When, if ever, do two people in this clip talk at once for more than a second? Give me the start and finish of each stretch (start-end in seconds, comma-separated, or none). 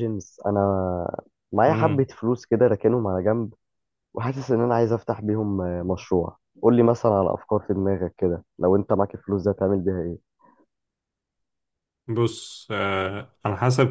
none